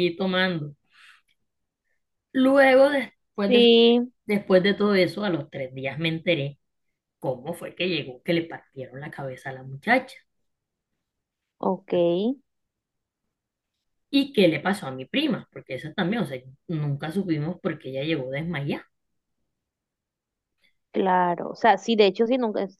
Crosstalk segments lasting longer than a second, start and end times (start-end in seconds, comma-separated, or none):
none